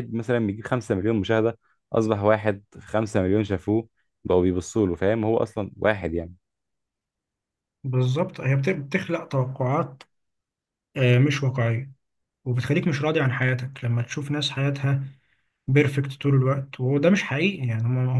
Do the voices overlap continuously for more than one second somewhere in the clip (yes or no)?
no